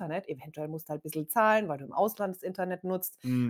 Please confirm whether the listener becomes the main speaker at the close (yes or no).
no